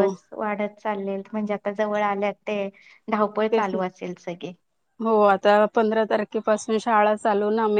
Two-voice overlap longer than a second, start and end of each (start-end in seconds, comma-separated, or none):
none